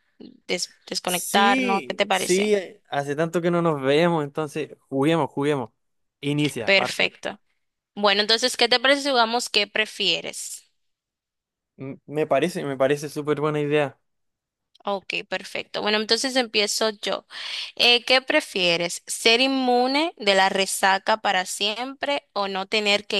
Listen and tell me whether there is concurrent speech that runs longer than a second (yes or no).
yes